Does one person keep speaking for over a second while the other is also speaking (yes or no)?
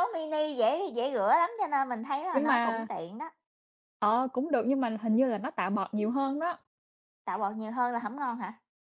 no